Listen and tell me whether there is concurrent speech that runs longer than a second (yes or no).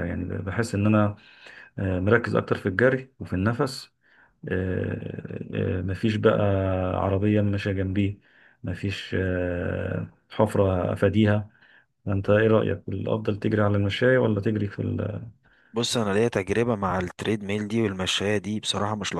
no